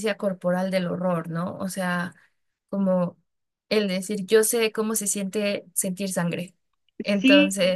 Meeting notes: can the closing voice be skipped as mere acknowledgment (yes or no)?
no